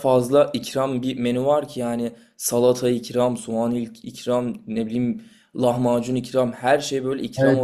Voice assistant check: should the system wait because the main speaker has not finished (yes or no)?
no